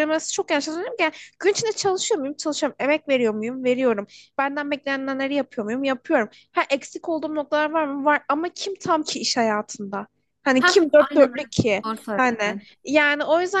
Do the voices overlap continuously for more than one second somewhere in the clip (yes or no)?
yes